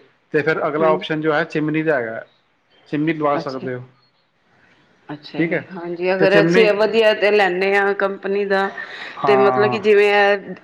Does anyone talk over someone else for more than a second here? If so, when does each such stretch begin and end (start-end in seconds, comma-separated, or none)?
none